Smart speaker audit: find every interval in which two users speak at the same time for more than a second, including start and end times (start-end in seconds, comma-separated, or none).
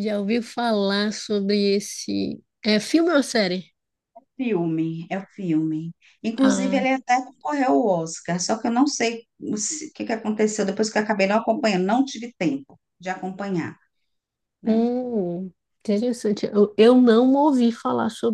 none